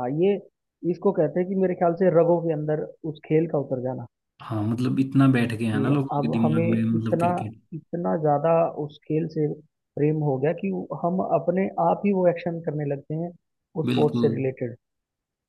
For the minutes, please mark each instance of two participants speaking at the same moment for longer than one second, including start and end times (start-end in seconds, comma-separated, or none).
5.7-7.3